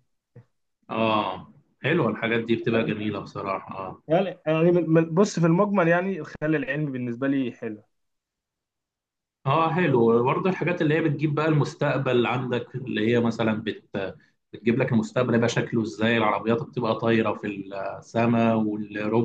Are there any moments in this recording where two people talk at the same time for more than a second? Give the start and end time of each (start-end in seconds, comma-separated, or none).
none